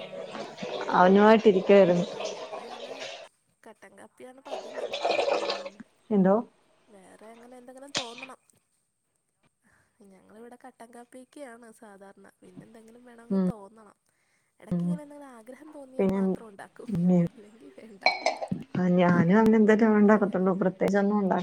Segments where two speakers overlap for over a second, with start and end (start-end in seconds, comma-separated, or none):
none